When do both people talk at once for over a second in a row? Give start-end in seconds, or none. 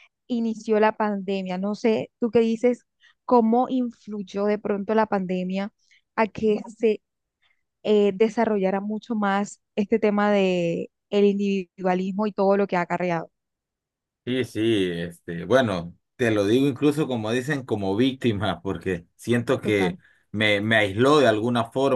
none